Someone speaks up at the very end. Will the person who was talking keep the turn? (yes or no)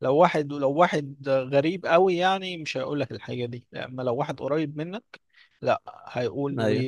yes